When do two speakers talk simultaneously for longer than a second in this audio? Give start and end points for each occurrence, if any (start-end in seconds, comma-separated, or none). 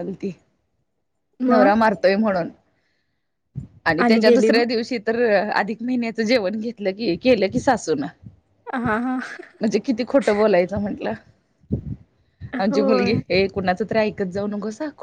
none